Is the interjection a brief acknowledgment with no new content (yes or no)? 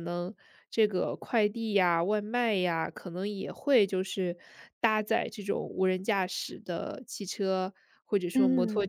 yes